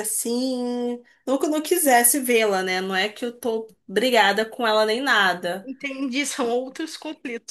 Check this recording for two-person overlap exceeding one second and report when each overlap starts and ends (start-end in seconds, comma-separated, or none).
none